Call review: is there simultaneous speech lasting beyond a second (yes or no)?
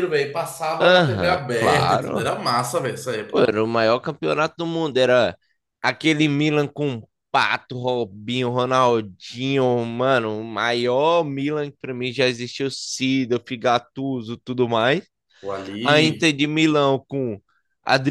yes